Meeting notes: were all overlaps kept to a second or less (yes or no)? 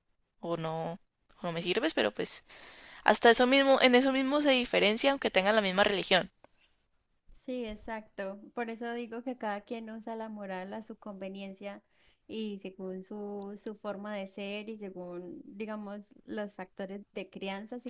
yes